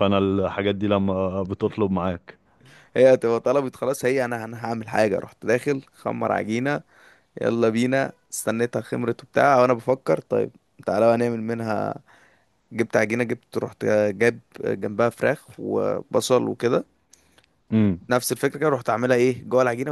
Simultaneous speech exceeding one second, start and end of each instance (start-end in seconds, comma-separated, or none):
none